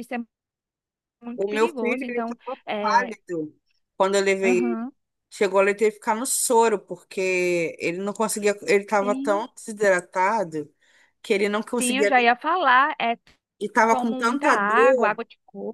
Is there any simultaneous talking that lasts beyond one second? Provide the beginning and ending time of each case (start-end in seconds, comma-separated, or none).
1.4-3.1, 13.9-15.2